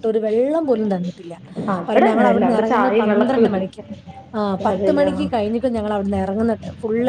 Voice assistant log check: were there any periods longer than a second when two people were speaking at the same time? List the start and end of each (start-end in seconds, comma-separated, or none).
1.9-3.7